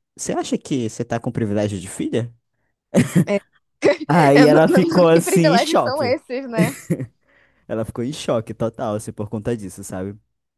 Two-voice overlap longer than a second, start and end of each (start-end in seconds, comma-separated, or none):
4.3-6.2